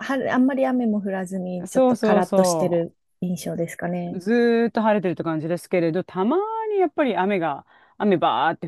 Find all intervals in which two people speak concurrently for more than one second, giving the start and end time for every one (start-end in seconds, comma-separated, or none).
1.7-2.9